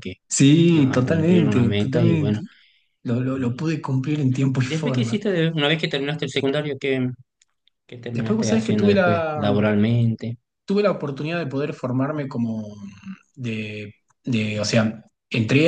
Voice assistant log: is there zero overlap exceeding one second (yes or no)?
no